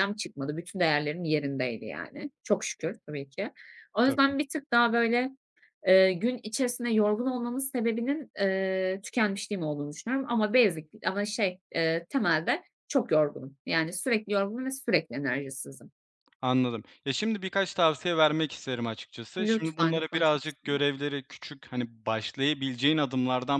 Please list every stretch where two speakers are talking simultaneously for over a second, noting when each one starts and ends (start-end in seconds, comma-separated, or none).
19.4-20.8